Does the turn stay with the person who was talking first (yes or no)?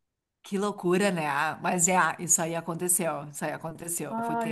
no